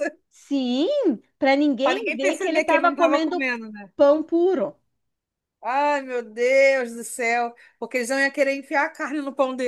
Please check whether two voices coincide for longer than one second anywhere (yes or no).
yes